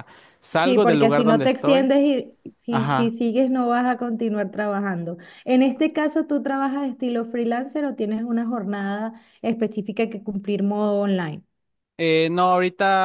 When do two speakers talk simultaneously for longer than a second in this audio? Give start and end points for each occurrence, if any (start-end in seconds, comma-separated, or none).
0.6-1.9